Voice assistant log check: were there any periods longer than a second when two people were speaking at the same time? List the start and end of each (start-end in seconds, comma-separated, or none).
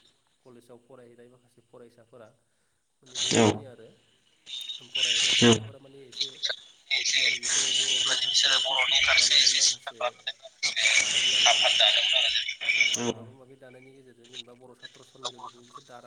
7.9-10.0